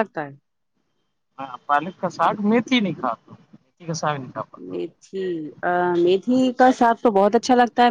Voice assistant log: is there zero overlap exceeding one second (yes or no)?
yes